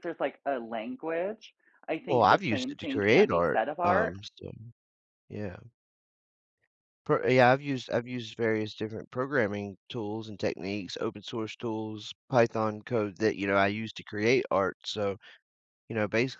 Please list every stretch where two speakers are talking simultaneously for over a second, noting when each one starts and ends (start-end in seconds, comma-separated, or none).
2.1-4.1